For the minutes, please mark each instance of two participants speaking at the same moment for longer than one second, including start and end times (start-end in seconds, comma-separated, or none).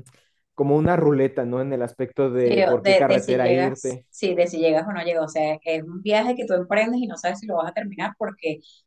2.4-4.0